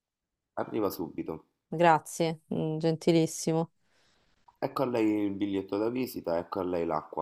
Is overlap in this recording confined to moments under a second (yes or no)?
yes